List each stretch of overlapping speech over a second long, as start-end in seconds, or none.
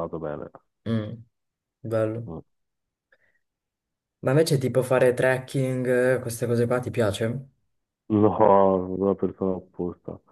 none